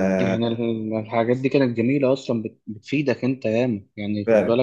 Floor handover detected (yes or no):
no